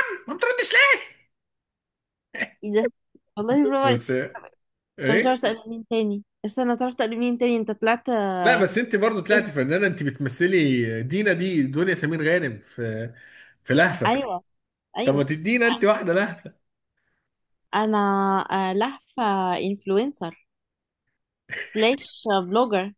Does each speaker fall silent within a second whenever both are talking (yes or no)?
yes